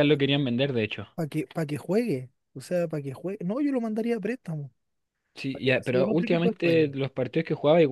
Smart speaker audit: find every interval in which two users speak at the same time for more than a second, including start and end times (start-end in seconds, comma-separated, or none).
5.5-6.9